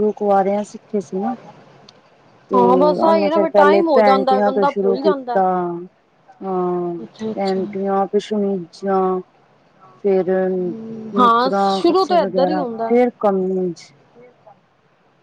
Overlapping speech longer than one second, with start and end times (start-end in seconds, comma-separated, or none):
3.0-5.4, 11.2-13.0